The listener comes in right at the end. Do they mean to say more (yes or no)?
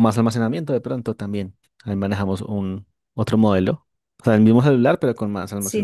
yes